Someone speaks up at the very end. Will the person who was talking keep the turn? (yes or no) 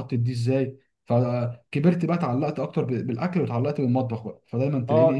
no